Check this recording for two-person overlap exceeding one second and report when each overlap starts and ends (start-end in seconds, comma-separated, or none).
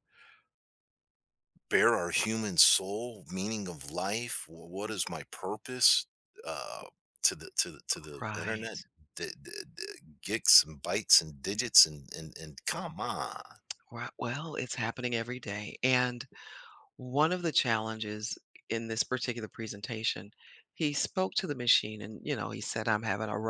none